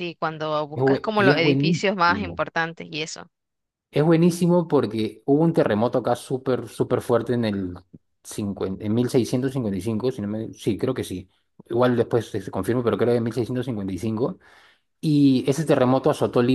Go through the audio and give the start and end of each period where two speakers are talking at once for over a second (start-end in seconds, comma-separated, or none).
0.7-2.4